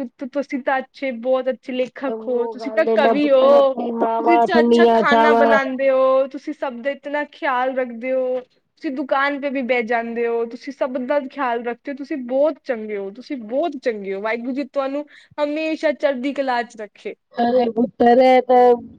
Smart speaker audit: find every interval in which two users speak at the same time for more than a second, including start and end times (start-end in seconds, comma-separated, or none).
2.1-5.4